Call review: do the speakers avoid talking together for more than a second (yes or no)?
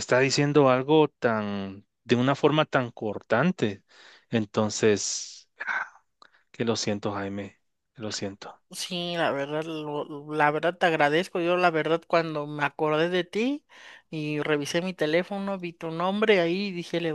yes